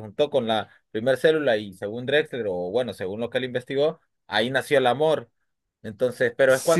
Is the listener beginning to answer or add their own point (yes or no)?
yes